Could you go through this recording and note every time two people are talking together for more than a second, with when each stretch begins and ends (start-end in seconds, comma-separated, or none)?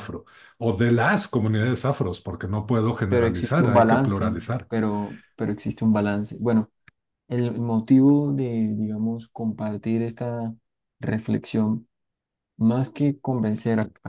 3.1-4.7